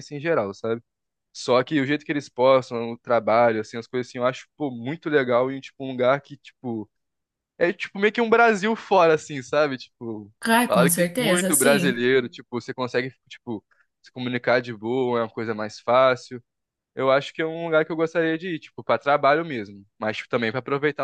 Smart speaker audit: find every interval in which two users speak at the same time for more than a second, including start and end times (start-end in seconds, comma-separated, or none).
10.4-12.1